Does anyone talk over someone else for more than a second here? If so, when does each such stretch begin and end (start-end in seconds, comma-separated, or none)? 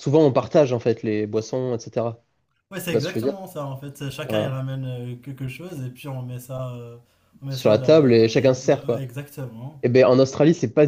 7.5-9.1